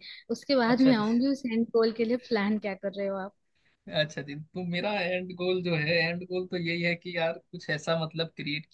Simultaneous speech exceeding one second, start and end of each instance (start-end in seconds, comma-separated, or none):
none